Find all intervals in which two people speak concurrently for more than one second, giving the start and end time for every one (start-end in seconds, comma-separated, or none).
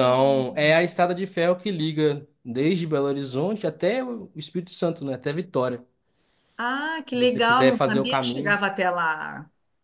7.1-8.6